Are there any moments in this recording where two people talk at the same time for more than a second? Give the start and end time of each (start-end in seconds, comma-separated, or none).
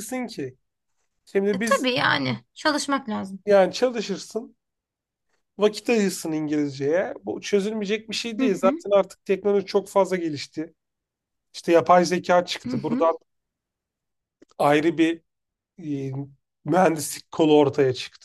none